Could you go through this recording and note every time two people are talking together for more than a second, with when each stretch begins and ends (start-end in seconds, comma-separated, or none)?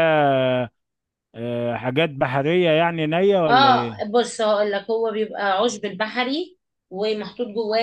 none